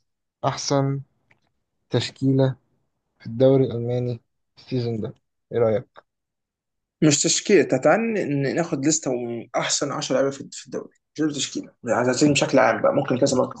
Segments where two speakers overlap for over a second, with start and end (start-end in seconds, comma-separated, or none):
none